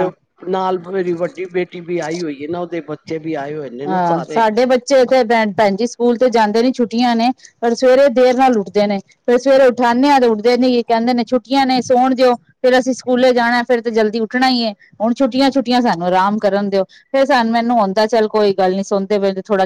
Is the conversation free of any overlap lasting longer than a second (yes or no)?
yes